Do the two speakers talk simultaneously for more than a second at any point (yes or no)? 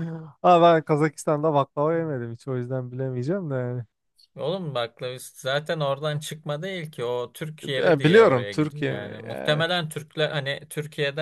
yes